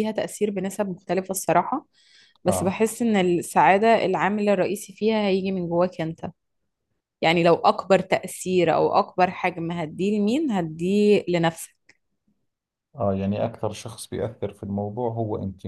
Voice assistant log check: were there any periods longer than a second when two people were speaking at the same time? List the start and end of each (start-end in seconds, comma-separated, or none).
none